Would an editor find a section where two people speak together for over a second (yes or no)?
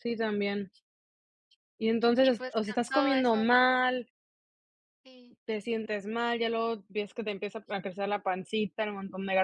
yes